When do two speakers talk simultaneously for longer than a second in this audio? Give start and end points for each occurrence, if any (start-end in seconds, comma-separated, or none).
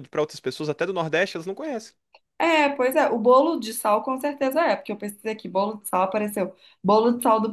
none